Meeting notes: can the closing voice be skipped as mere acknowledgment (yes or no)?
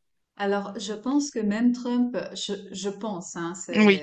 yes